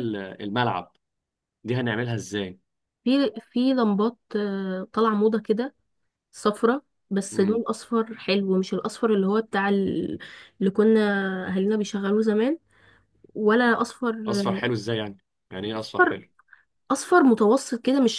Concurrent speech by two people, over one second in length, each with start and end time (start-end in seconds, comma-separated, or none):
none